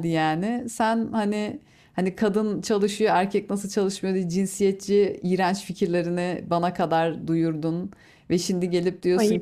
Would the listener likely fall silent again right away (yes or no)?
yes